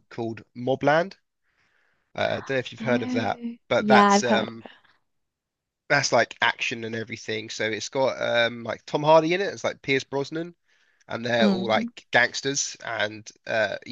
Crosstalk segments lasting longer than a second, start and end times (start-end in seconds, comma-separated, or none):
2.8-4.7